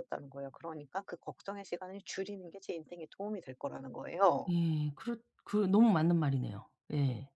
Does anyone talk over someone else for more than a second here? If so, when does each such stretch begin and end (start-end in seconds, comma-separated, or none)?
none